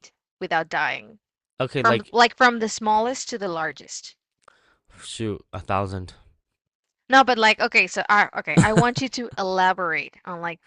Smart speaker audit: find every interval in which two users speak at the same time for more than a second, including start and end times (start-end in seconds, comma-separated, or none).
none